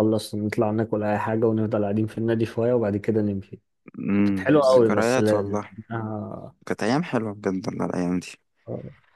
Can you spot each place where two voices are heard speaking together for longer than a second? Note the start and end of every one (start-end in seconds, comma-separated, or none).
4.2-5.7